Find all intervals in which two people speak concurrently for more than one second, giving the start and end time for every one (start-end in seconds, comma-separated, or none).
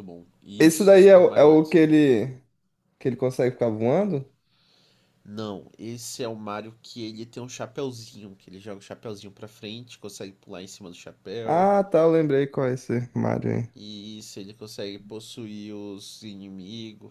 0.6-1.9